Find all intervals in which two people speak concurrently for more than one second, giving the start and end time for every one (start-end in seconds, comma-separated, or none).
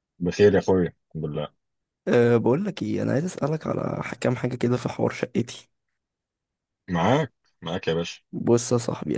none